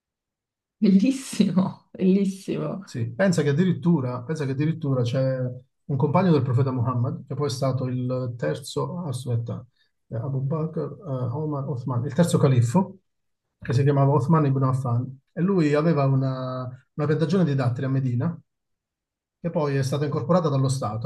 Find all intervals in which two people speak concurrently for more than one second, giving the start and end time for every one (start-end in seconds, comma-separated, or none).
none